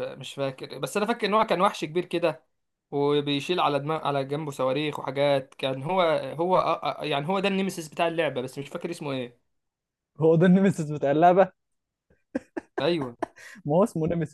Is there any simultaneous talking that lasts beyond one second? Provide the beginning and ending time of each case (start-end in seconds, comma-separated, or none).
none